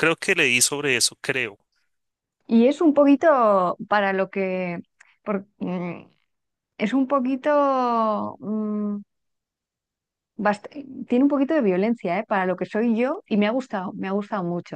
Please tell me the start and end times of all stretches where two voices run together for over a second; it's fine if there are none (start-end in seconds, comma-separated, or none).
none